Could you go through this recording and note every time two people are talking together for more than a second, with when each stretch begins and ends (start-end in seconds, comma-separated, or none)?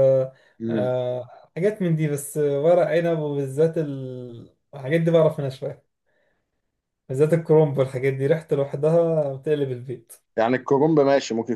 none